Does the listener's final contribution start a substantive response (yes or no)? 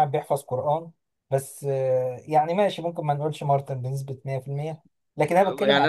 yes